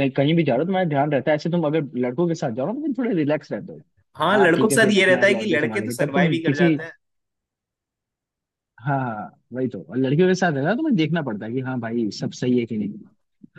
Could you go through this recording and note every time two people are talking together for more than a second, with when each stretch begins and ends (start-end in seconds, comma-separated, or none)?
4.3-6.7